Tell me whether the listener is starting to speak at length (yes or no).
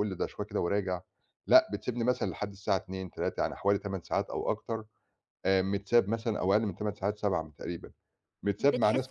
yes